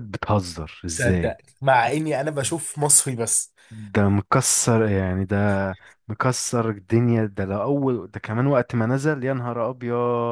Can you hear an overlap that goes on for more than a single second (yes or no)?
no